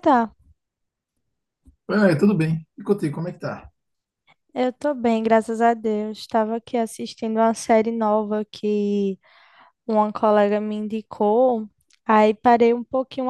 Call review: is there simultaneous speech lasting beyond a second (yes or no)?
no